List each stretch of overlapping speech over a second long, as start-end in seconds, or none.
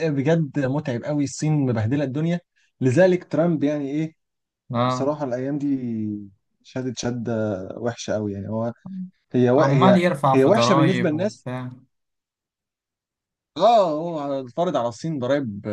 9.6-11.5